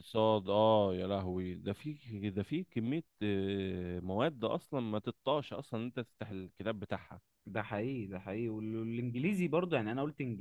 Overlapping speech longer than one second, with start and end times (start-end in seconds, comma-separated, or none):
none